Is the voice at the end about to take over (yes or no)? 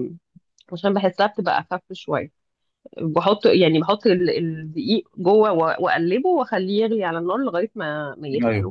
no